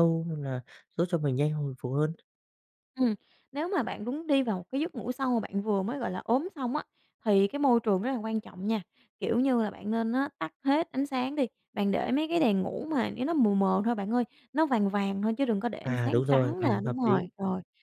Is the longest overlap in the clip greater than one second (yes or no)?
yes